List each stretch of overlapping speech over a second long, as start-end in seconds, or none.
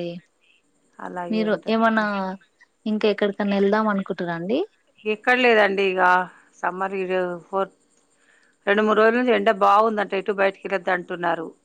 none